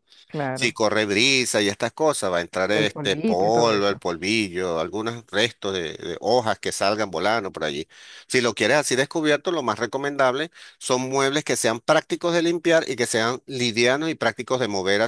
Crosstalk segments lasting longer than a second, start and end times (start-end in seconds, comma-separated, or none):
2.7-4.0